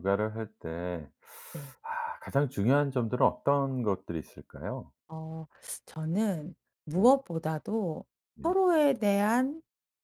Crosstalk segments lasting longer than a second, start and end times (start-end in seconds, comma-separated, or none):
none